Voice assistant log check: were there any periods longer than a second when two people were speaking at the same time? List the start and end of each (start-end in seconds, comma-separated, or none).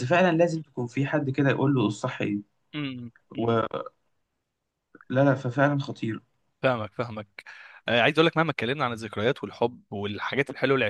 none